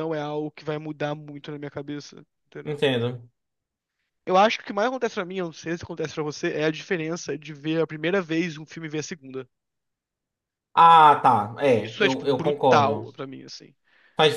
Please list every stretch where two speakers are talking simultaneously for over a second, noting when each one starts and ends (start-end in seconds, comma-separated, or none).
11.8-13.1